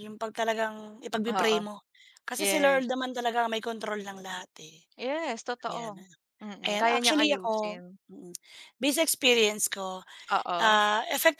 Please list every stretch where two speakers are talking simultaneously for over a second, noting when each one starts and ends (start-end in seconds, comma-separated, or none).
6.7-8.0